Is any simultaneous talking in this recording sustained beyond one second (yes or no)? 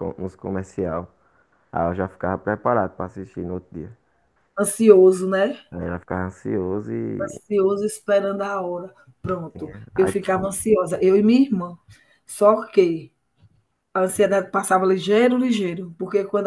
no